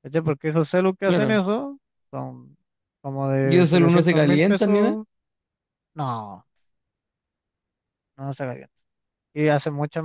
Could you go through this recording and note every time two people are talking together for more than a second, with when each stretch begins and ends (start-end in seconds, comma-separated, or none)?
3.4-5.0